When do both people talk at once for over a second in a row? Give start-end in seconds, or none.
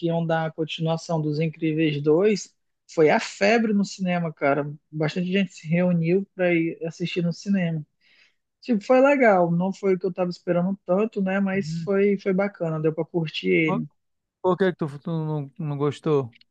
none